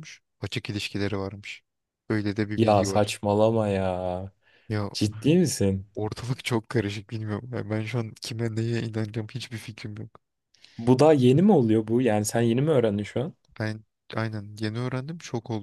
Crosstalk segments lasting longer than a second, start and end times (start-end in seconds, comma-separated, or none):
none